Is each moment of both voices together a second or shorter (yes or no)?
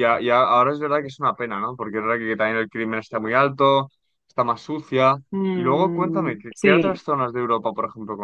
no